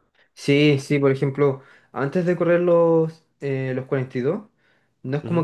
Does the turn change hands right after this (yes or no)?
no